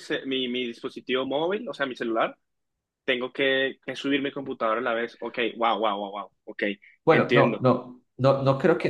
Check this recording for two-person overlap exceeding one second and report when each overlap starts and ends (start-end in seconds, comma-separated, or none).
none